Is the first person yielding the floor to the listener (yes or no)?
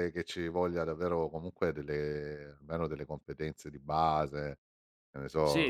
yes